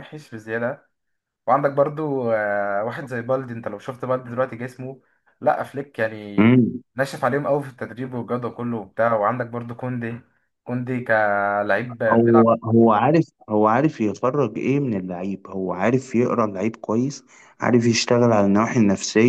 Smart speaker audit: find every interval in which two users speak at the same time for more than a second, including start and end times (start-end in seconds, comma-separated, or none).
none